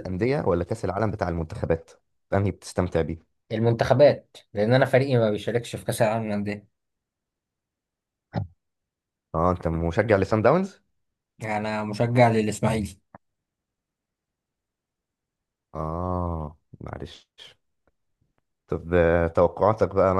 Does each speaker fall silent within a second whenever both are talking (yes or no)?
yes